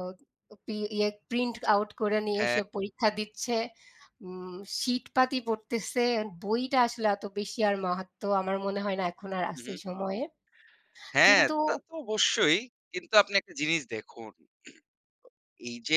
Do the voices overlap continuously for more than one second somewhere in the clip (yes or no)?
no